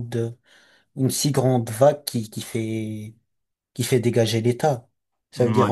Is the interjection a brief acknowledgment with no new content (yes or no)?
yes